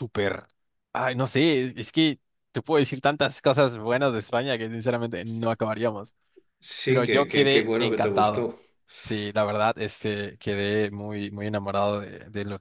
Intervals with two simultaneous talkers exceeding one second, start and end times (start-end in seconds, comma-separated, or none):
6.8-8.5